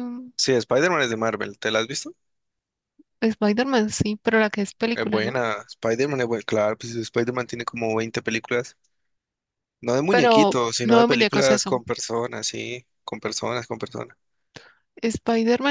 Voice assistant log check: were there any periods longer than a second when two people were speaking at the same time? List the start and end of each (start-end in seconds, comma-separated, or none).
10.1-11.8